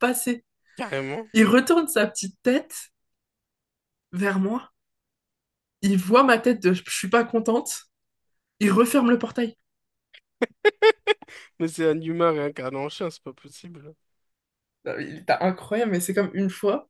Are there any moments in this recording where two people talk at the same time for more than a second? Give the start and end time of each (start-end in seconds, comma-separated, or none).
none